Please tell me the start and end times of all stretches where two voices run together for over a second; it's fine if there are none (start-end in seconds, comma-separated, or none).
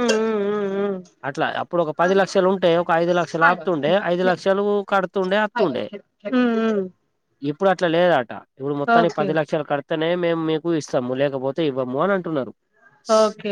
none